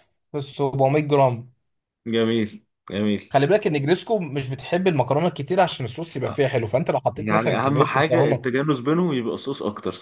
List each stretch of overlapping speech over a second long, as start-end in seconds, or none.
7.2-8.5